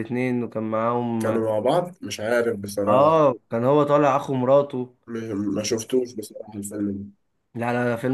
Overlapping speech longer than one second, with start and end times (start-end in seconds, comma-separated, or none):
none